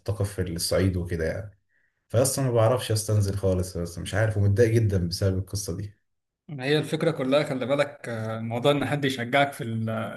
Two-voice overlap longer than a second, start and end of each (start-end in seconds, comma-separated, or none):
none